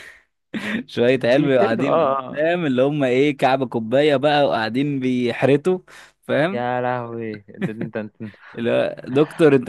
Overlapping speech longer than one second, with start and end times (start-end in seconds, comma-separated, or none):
1.2-2.5